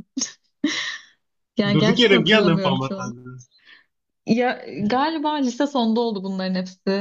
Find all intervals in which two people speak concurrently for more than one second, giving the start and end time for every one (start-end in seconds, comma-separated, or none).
1.8-3.1